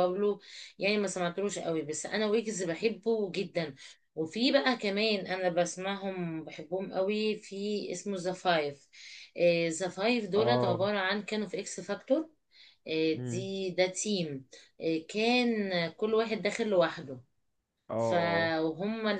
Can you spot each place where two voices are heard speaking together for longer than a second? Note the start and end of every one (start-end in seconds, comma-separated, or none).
none